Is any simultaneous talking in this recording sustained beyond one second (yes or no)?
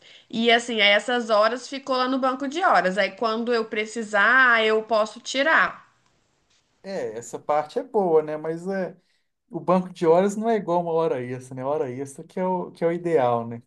no